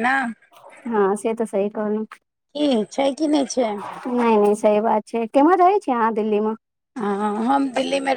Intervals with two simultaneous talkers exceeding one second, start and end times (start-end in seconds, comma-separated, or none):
none